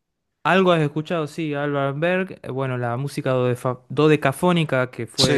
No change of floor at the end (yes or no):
yes